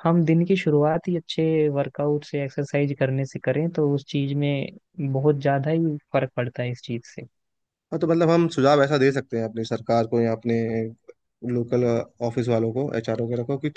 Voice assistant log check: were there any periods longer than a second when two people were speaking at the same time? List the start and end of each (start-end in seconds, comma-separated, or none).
none